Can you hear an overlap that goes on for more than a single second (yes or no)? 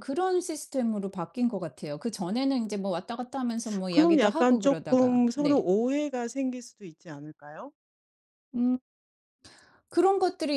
yes